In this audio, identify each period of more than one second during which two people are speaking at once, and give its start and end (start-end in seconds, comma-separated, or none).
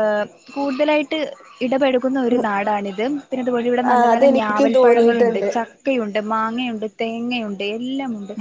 3.9-5.5